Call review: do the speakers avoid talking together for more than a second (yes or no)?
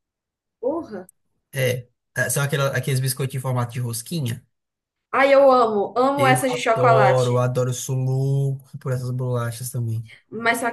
no